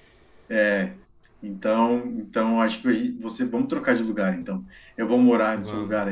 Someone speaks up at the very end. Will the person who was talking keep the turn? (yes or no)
yes